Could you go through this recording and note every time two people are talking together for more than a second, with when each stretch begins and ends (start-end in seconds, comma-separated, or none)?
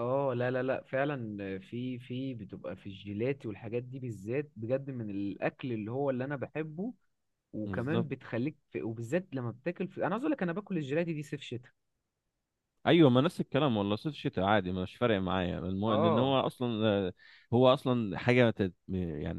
none